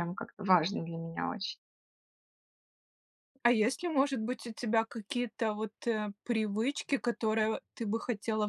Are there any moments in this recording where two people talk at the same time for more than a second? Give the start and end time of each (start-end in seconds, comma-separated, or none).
none